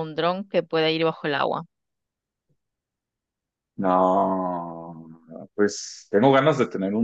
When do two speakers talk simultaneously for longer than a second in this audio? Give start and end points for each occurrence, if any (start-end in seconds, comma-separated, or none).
none